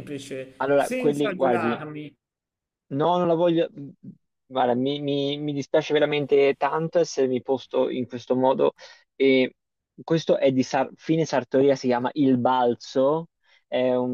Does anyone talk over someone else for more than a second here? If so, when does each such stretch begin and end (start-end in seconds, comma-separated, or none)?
0.6-1.9